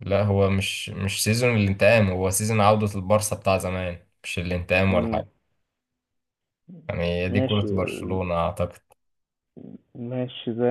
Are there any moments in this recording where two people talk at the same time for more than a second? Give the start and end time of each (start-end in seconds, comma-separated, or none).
none